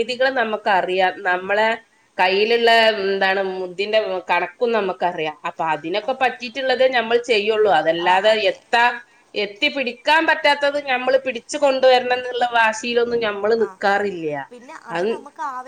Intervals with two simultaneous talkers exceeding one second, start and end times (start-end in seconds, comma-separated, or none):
none